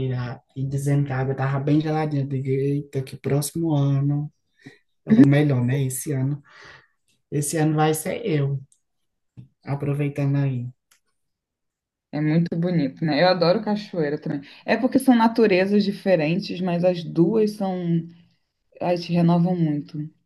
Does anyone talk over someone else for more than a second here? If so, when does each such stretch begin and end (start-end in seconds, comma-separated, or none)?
none